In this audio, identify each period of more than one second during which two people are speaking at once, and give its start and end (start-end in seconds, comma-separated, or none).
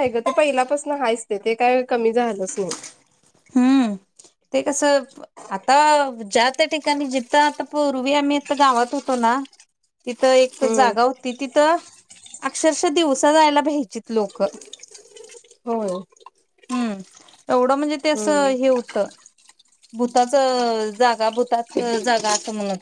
none